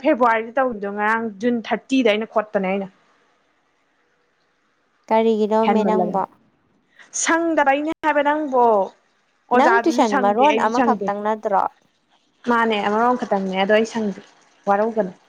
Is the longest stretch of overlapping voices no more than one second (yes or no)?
no